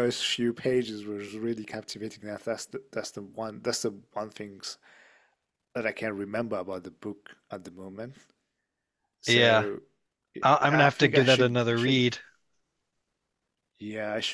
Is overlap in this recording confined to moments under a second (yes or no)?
no